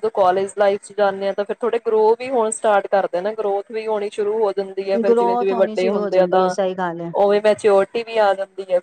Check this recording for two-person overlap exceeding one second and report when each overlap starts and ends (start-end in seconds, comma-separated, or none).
5.1-6.5